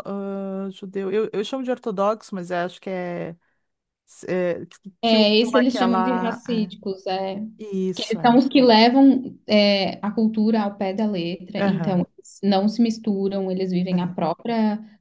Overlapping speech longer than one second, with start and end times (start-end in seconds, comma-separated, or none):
5.0-6.7